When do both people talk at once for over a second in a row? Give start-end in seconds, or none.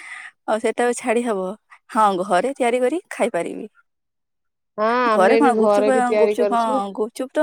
5.1-6.7